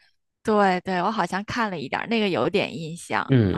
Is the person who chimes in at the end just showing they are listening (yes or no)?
no